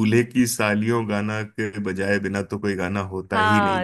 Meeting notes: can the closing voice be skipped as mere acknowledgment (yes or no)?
no